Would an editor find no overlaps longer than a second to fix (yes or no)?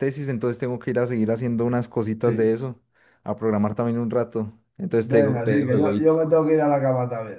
no